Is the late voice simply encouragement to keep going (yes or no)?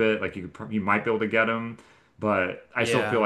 yes